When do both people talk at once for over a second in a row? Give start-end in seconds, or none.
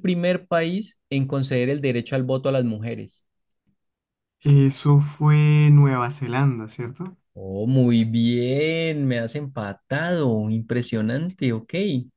none